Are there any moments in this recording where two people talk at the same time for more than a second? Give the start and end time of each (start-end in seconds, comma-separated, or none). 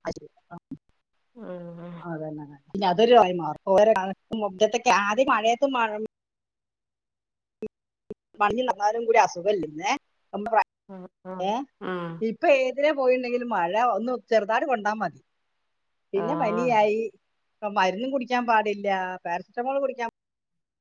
none